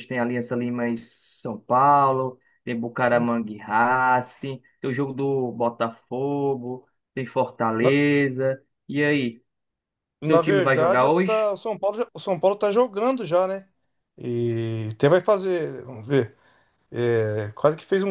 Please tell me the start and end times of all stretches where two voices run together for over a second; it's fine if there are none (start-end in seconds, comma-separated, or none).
10.2-11.5